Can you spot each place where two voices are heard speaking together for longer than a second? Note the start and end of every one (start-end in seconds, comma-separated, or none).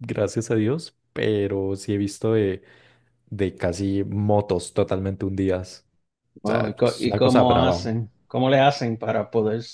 6.4-7.9